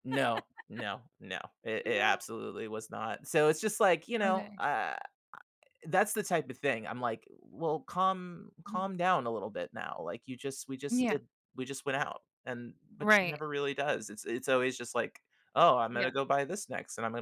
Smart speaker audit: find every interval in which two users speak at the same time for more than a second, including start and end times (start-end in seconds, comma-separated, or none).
none